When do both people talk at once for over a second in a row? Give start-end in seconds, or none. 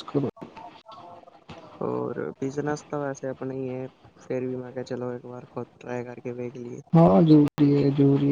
none